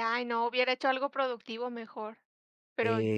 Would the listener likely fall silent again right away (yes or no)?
no